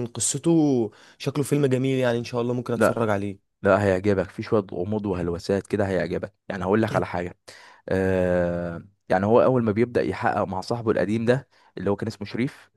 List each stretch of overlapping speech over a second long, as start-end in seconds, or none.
none